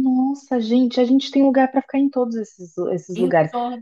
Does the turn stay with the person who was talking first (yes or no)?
yes